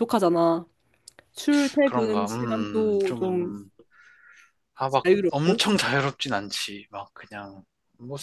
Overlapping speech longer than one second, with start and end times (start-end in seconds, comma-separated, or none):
1.8-3.6